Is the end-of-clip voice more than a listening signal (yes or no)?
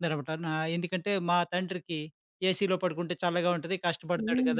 yes